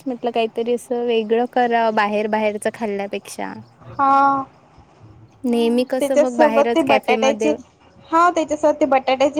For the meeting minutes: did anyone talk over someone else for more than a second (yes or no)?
yes